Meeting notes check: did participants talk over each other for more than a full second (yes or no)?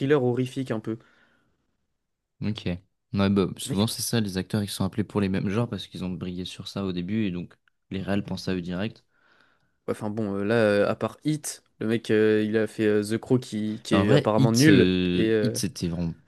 yes